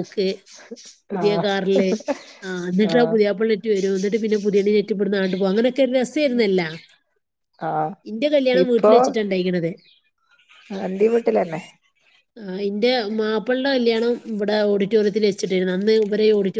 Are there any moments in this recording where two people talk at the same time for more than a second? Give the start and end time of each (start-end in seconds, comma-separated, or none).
none